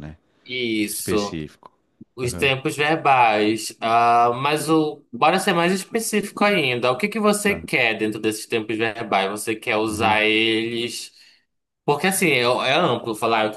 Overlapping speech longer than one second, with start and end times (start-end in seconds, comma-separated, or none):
none